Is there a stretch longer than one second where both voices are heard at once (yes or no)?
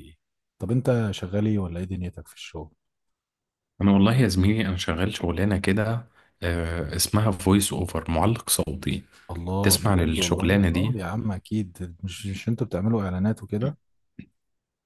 yes